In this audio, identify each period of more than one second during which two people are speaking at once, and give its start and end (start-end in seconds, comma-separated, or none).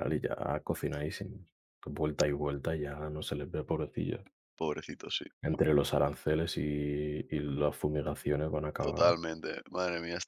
none